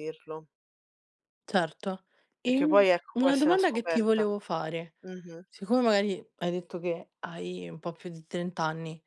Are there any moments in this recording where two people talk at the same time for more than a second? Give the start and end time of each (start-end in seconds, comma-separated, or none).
2.4-4.2